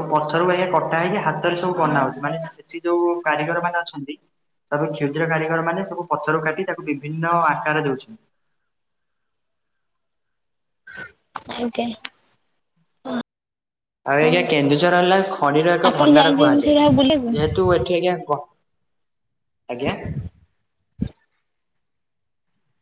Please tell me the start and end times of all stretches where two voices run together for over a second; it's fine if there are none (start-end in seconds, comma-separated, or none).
15.9-17.3